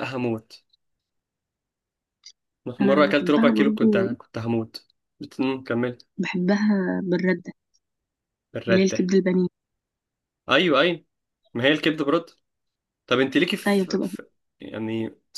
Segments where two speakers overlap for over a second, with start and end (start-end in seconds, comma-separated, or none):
2.8-4.1